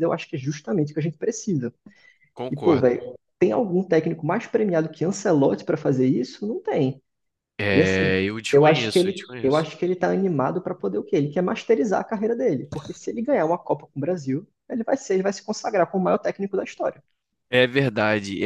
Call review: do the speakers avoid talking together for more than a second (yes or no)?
no